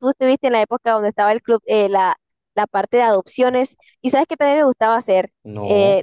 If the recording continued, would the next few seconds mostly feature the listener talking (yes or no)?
no